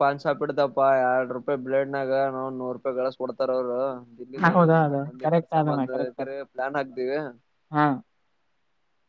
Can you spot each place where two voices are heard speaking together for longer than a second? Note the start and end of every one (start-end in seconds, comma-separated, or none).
4.5-6.3